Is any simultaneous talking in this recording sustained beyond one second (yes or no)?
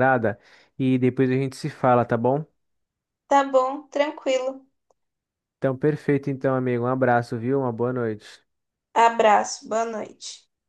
no